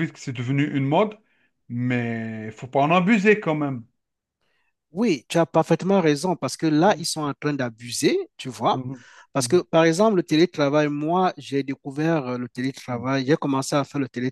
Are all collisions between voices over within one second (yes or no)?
yes